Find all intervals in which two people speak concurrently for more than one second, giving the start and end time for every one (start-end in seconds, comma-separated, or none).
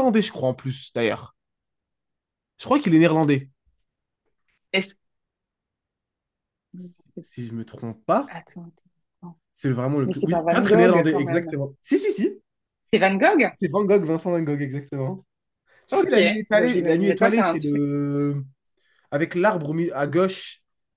10.1-11.5, 15.9-17.8